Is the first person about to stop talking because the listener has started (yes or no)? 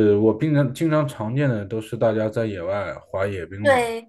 yes